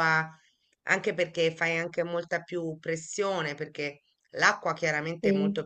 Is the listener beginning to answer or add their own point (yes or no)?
no